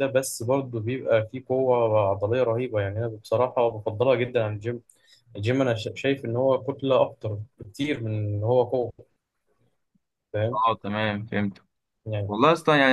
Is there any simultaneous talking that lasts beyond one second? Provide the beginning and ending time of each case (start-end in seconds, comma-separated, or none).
none